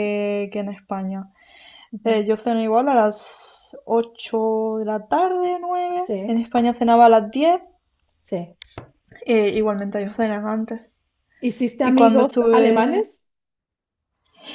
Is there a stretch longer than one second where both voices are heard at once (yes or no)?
yes